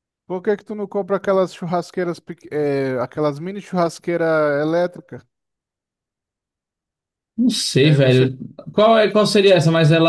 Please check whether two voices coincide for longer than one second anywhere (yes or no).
no